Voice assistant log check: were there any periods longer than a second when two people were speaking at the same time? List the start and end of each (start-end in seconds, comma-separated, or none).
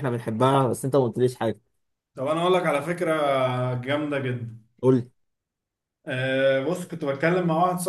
none